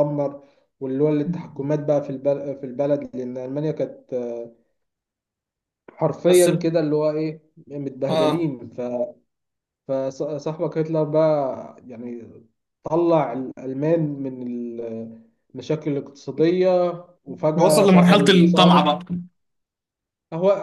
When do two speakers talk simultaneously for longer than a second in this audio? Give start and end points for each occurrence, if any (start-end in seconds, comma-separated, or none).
17.5-18.9